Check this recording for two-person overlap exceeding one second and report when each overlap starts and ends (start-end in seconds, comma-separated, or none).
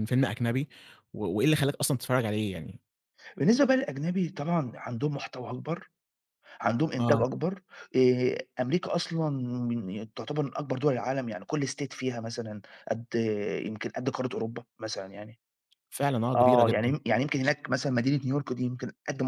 none